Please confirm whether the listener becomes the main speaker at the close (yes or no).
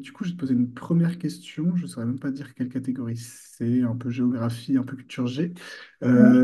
no